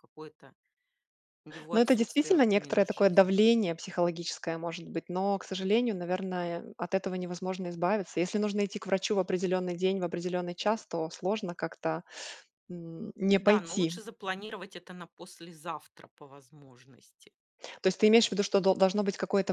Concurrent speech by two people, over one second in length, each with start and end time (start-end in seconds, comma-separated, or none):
1.7-3.3